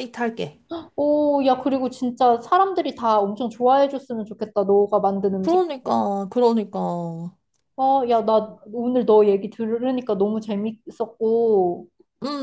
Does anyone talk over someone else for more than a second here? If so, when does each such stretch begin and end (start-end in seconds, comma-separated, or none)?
none